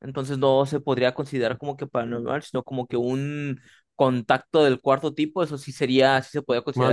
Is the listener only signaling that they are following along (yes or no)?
no